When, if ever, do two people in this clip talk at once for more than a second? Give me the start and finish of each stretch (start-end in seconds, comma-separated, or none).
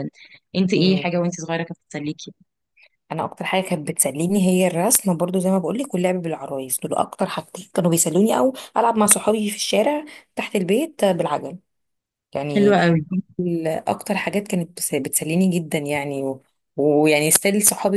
none